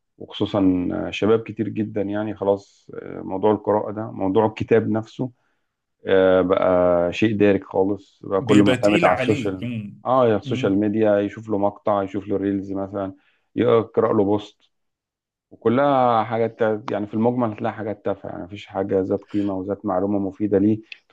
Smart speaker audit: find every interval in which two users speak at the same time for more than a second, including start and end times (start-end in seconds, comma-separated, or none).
8.4-9.7